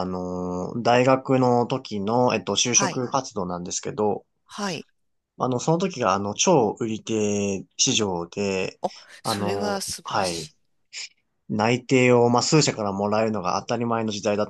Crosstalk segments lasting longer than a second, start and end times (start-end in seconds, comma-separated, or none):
9.2-10.5